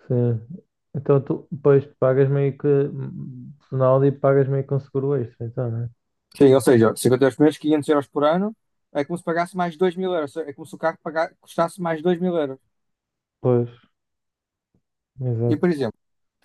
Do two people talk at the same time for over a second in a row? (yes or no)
no